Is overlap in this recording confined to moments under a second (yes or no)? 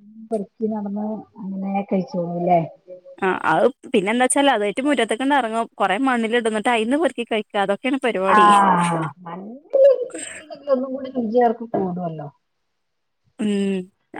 yes